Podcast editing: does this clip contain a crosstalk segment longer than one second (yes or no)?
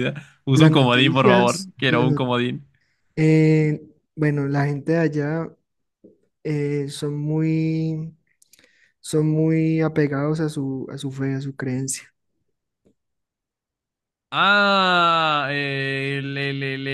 yes